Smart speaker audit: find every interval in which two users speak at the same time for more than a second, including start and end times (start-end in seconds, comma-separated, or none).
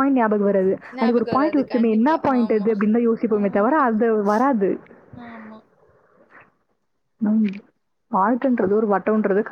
1.0-2.7